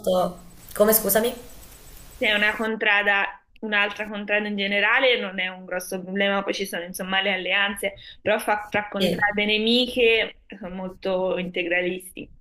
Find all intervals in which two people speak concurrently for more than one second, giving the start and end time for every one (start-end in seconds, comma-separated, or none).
none